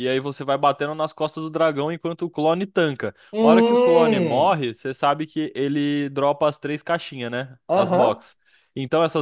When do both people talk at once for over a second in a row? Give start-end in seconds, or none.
3.3-4.6